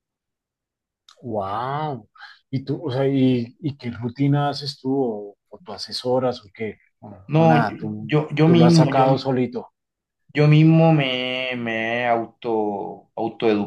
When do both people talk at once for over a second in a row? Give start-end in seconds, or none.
7.3-9.1